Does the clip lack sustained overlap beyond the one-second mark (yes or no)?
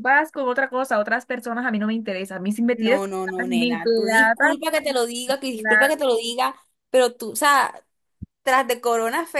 no